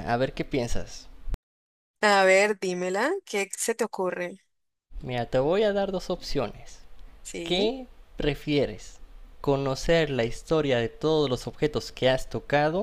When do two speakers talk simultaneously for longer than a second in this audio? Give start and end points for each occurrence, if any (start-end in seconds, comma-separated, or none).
none